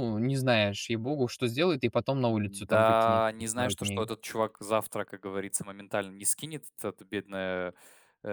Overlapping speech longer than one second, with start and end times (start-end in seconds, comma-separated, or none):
2.6-4.0